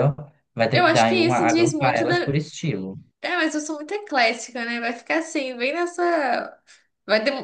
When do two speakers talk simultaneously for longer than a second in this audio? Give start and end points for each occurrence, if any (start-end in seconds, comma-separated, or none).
0.7-2.3